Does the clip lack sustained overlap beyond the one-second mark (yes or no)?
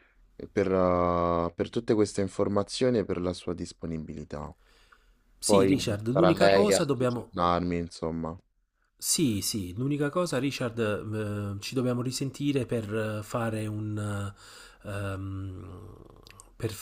no